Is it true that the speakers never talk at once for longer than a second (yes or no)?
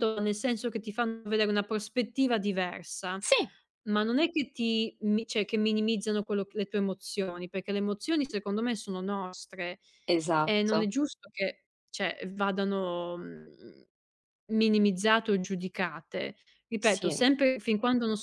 yes